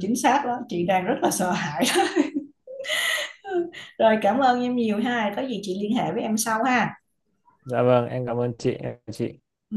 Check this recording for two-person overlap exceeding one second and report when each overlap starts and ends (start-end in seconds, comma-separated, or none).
none